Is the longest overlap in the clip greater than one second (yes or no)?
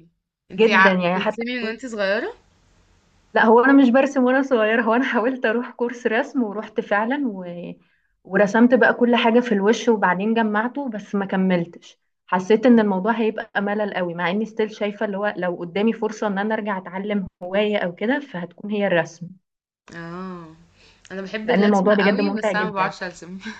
yes